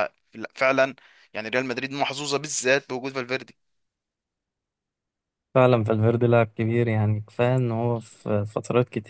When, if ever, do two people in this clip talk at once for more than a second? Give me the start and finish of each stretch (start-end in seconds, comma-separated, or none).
none